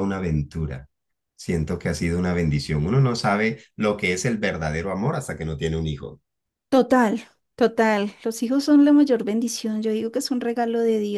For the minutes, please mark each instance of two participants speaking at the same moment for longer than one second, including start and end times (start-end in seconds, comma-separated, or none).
none